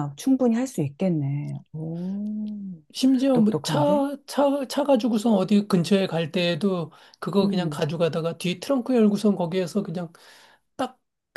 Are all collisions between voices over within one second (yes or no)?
yes